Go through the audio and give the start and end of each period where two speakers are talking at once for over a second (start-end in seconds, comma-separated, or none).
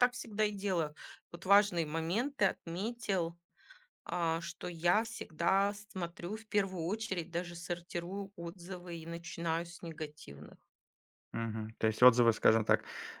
none